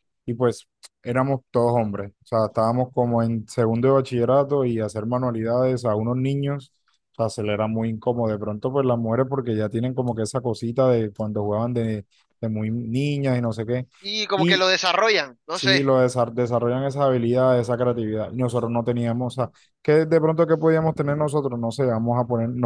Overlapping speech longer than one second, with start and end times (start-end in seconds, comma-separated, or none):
none